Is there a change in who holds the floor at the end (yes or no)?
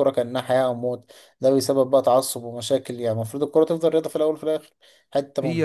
no